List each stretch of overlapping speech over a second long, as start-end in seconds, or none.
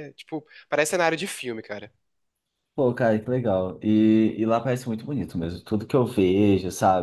none